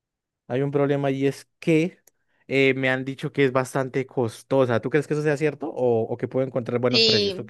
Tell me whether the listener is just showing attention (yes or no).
no